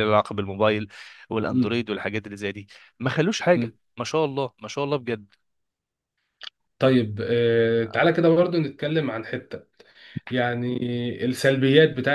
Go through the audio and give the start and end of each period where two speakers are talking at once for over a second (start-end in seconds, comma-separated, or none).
none